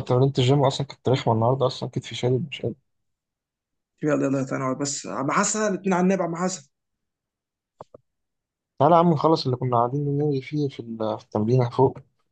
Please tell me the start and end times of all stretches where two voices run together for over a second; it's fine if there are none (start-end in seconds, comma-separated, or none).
none